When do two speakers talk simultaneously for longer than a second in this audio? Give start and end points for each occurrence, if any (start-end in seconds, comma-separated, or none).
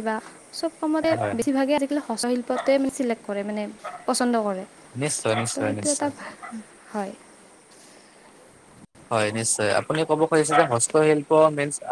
none